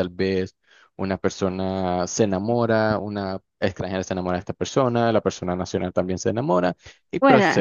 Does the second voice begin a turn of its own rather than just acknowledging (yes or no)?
no